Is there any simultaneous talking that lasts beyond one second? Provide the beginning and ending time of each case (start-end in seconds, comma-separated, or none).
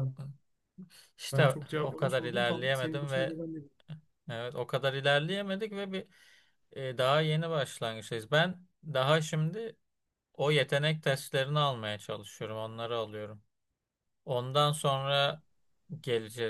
1.3-3.4